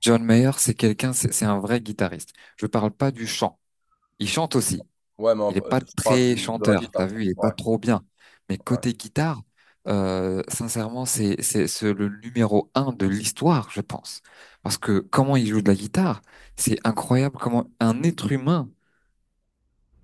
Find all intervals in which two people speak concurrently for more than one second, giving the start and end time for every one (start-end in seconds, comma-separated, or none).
5.5-7.5